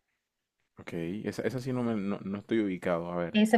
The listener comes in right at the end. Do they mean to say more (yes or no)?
yes